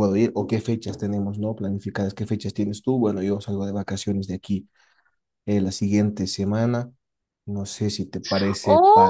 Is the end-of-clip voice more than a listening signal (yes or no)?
yes